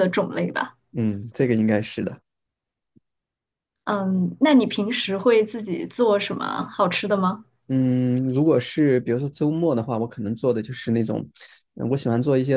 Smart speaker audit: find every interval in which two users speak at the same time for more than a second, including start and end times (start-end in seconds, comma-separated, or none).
none